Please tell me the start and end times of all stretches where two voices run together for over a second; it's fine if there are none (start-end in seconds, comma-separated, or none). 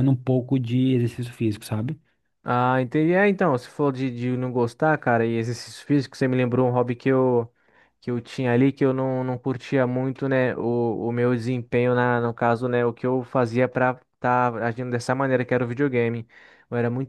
none